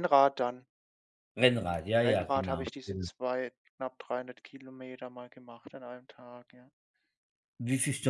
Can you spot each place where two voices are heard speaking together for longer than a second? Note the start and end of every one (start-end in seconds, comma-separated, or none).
1.5-3.1